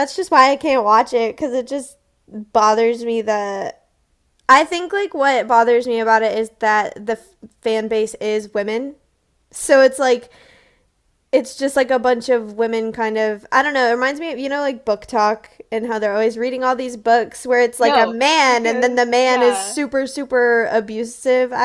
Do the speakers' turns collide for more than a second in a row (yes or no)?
yes